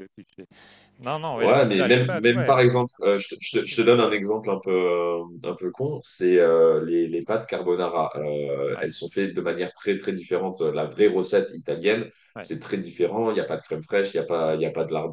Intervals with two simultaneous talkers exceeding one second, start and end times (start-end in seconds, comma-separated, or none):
1.4-3.9